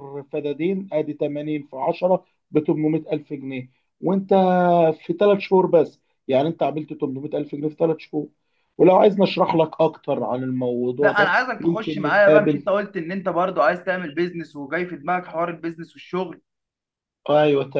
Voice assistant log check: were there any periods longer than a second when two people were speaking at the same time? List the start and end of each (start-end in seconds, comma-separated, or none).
11.0-12.6